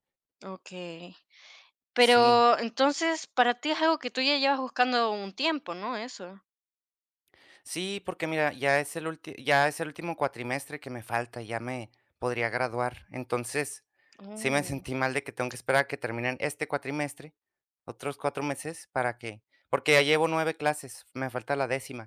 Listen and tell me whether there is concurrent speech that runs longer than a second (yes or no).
no